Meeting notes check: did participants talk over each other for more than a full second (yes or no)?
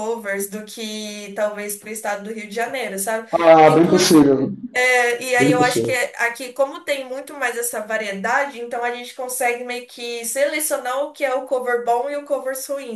no